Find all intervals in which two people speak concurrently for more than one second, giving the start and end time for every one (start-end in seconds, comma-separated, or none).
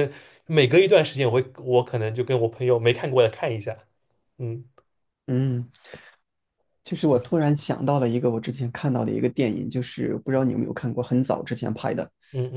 none